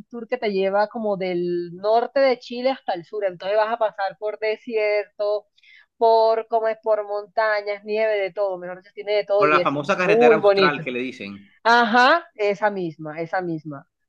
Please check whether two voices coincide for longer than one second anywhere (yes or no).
yes